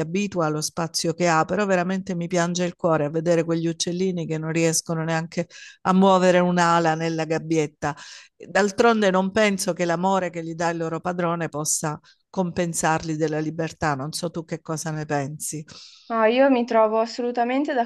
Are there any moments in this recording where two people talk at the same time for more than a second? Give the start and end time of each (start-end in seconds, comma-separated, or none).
none